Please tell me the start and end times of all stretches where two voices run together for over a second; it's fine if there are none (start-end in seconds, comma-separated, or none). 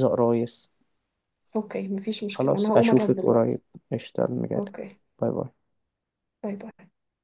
2.3-3.6